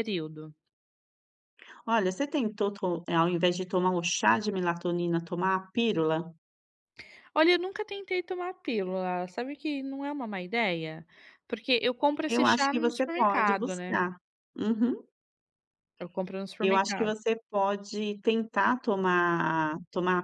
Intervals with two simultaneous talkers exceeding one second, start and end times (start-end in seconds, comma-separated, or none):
12.3-14.0